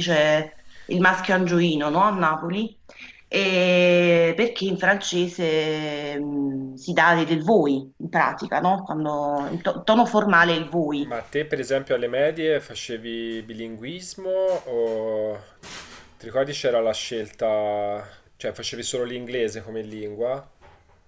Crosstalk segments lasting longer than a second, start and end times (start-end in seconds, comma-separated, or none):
none